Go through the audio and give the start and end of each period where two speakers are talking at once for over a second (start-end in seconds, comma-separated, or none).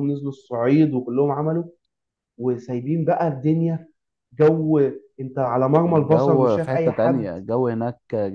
5.9-7.3